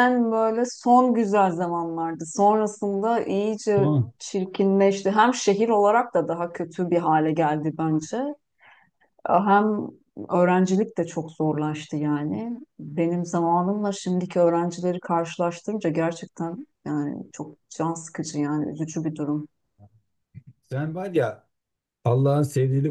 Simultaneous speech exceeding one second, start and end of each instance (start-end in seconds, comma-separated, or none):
none